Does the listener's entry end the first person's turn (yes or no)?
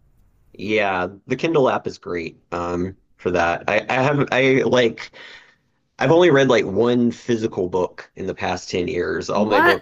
no